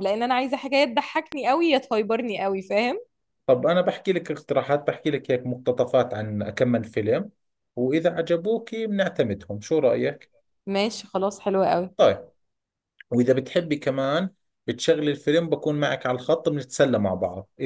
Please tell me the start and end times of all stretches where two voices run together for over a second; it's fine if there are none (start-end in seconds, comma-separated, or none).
none